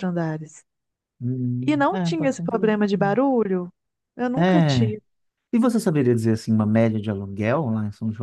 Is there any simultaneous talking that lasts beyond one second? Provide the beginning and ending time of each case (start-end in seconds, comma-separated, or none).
1.7-3.2